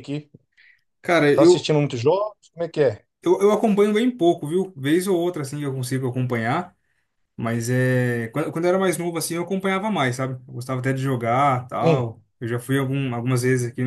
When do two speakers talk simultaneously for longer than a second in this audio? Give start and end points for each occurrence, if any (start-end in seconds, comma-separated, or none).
none